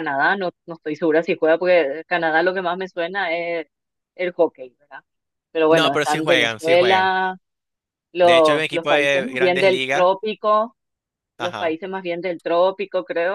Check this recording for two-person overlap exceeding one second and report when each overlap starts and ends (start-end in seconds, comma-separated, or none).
5.7-7.1, 8.2-10.1